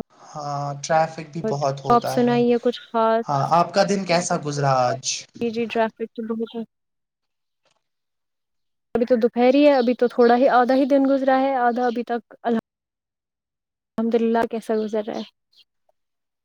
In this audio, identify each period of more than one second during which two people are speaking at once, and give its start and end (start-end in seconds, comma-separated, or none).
none